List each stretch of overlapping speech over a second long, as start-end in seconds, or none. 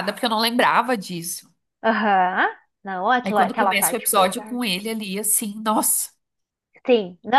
3.2-4.6